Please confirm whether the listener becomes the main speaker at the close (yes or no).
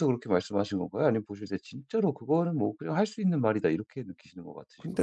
yes